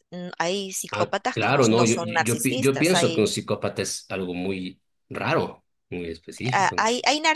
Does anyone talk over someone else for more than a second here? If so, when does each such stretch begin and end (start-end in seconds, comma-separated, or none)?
0.9-3.4